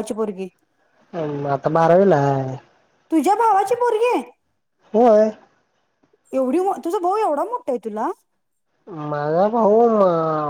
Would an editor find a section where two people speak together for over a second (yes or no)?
no